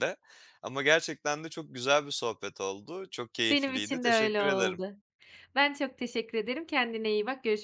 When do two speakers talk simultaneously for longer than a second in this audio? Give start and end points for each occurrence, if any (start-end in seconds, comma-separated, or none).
3.5-4.8